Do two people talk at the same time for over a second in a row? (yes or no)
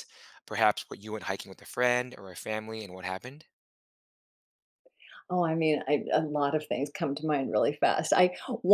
no